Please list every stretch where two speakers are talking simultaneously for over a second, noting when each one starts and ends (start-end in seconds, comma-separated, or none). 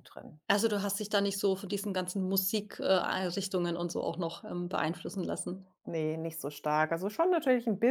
none